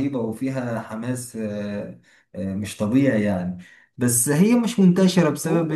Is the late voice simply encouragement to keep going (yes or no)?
yes